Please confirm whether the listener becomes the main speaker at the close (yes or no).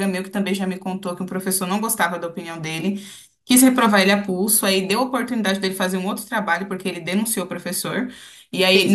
no